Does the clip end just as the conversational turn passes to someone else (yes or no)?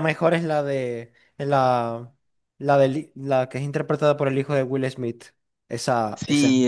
yes